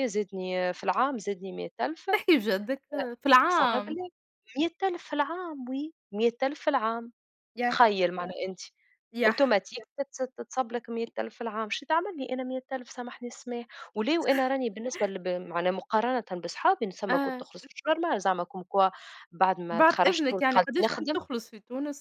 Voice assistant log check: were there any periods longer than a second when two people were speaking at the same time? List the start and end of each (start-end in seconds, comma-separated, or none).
19.7-21.2